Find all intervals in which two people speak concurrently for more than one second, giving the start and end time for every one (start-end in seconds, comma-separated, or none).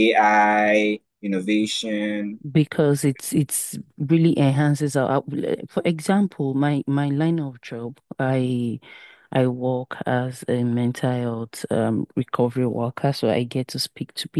none